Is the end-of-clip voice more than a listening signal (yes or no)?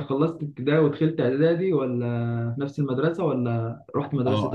yes